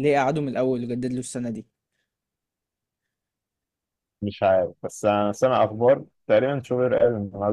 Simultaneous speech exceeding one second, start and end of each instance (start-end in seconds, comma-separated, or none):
none